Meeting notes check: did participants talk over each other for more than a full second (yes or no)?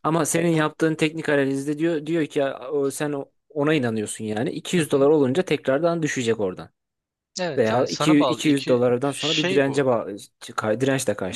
yes